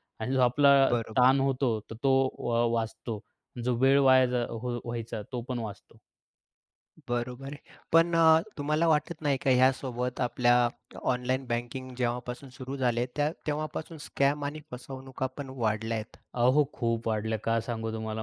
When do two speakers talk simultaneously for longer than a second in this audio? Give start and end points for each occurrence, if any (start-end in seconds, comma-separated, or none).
none